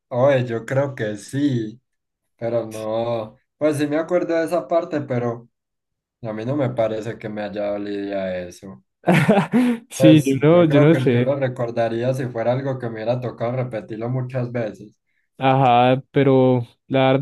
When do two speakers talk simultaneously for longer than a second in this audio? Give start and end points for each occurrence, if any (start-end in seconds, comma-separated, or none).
10.0-11.4